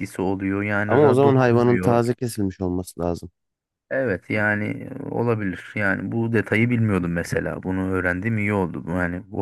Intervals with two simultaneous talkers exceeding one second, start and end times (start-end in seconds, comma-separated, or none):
0.9-2.1